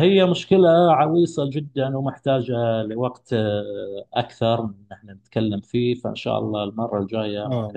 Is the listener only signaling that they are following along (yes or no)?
no